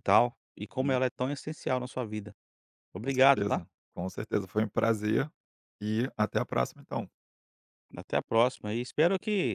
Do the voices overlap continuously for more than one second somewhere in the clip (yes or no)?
no